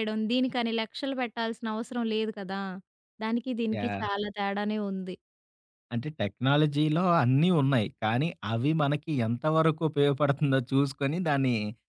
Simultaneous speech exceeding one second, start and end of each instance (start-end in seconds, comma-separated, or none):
none